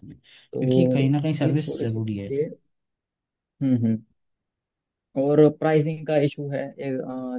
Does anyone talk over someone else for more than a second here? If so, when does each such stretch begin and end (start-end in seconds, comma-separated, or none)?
0.5-2.3